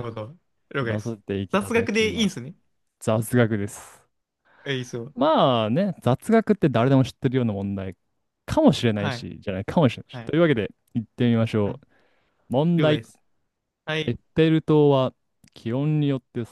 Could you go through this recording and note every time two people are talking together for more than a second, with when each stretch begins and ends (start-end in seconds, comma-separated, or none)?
0.8-2.4